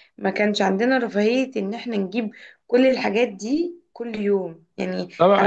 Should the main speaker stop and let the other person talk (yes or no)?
yes